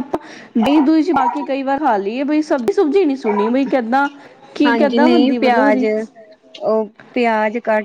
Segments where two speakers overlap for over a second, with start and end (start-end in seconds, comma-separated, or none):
4.7-5.8